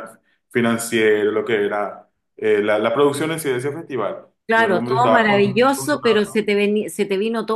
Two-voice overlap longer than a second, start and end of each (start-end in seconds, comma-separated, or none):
4.5-6.0